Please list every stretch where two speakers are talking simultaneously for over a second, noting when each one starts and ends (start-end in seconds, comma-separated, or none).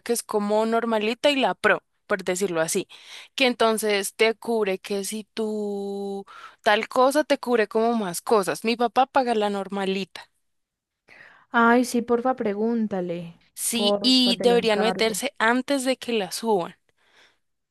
13.5-15.2